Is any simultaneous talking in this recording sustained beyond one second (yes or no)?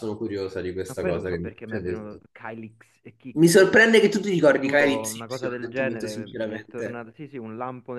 yes